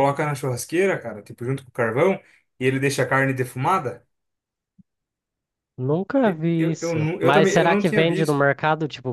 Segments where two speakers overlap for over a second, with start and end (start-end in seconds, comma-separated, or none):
6.2-8.5